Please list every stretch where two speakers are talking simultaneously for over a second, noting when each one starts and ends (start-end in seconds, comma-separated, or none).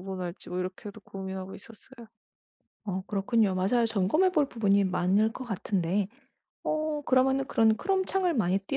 none